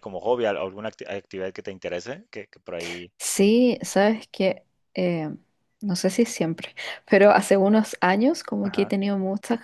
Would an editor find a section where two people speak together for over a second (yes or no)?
no